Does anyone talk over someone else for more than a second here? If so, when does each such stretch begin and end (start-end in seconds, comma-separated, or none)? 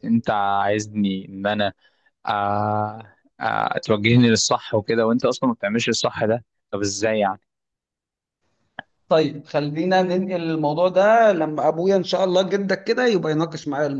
none